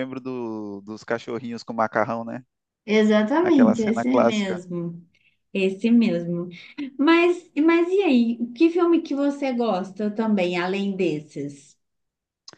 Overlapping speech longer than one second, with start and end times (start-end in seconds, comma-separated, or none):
3.4-4.6